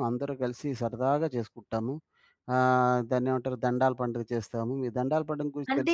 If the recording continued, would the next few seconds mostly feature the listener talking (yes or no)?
no